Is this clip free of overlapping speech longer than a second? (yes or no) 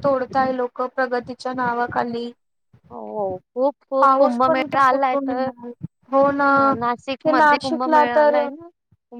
no